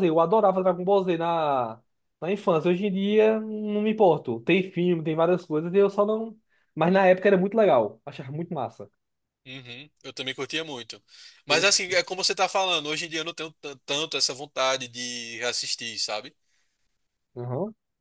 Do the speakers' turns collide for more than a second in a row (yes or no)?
no